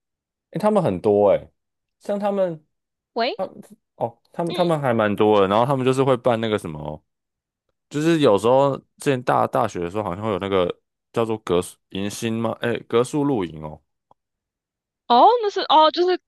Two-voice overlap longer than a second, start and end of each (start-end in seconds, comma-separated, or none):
none